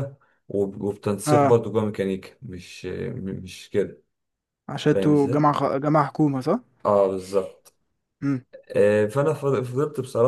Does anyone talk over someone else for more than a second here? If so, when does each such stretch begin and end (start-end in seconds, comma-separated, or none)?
none